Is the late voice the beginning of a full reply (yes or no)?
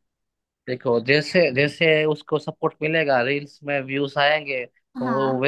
no